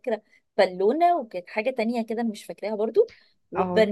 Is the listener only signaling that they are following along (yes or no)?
yes